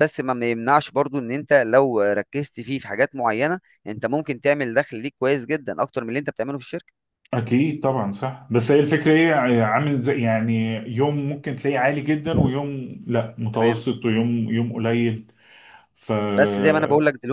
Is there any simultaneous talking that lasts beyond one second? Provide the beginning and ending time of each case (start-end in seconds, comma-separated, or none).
none